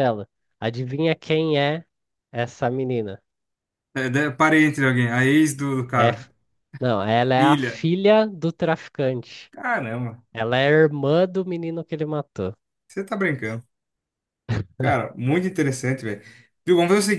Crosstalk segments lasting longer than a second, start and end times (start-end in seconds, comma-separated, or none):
none